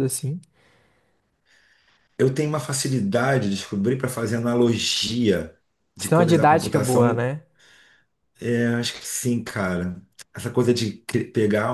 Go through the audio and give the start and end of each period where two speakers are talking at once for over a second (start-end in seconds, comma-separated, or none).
6.0-7.2